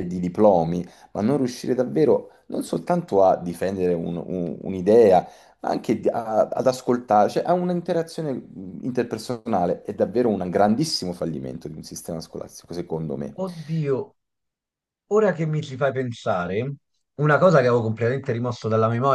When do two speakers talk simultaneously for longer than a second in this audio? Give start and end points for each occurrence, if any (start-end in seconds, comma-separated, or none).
none